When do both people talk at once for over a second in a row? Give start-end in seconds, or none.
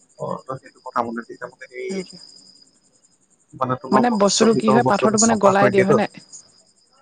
4.2-6.0